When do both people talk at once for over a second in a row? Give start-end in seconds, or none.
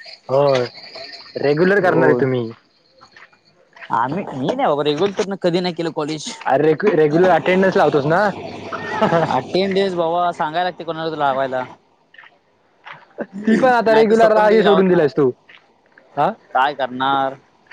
13.5-15.1